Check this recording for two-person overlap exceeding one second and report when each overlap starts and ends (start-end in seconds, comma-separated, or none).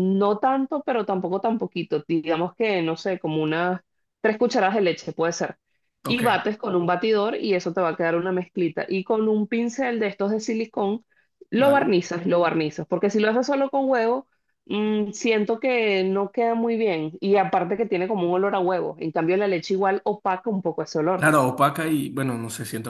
none